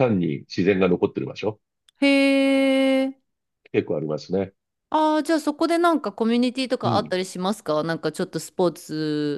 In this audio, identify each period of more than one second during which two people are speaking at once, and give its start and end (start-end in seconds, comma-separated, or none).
none